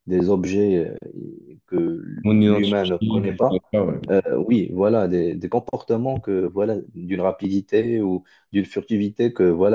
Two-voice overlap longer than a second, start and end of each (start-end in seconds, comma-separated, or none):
2.2-3.6